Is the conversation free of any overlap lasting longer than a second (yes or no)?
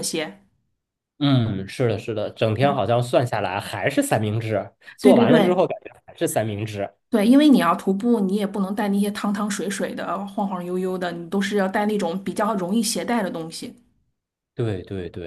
yes